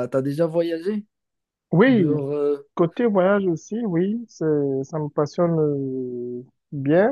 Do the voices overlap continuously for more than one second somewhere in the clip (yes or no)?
no